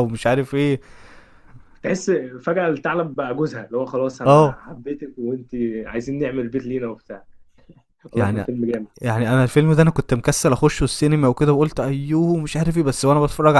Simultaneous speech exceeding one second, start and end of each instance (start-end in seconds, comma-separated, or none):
none